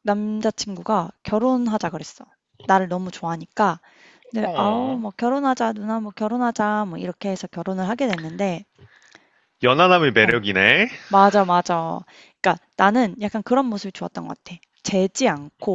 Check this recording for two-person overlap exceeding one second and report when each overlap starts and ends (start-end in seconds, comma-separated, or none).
none